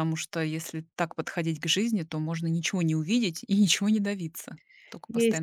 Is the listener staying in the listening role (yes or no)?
no